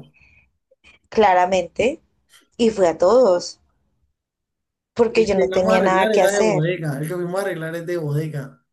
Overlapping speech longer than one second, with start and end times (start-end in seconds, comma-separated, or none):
5.1-6.7